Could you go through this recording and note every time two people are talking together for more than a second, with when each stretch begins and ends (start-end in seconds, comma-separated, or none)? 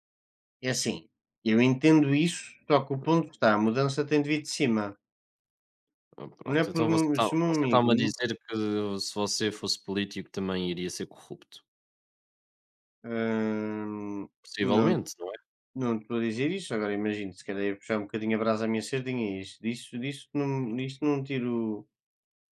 6.4-7.9